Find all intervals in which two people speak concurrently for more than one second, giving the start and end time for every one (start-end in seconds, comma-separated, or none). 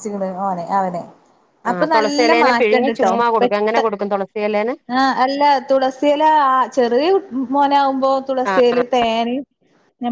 1.7-3.8